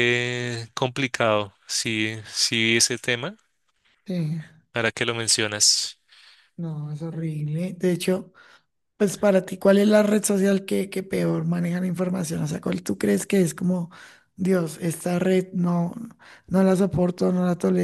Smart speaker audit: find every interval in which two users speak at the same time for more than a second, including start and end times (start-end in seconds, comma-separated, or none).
none